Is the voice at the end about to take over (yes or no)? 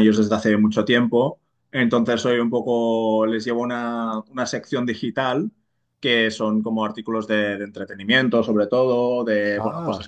no